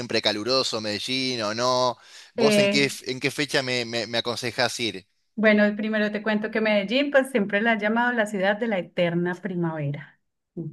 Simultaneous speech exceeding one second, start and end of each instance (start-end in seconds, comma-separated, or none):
none